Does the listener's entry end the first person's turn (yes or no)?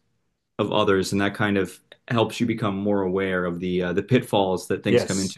yes